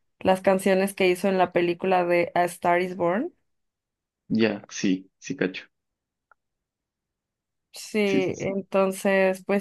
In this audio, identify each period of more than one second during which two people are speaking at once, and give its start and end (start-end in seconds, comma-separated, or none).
none